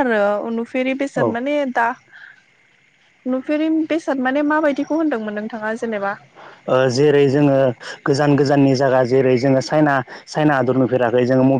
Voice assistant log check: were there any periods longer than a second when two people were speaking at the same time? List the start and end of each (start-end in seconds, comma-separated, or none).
none